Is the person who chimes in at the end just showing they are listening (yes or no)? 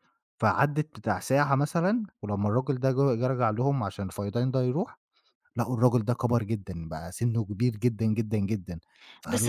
no